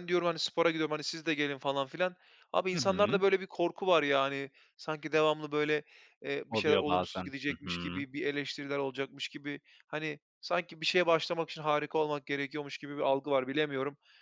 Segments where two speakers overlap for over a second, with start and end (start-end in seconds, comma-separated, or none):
6.5-8.0